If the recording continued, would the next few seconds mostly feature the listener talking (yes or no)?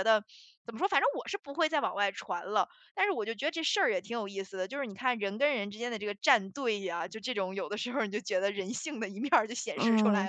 yes